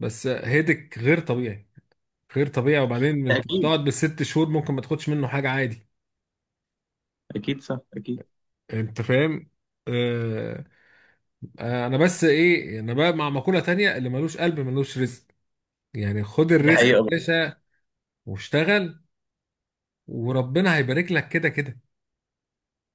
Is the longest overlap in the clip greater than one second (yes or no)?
no